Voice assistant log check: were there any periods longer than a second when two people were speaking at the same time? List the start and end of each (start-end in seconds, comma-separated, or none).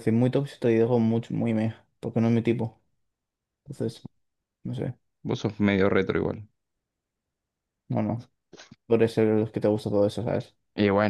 none